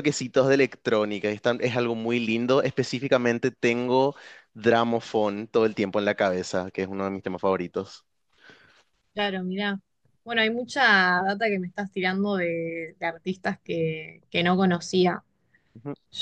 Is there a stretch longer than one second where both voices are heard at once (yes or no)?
no